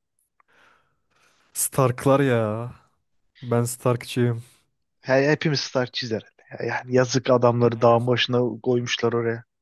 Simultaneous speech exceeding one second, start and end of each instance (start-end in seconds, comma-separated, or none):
none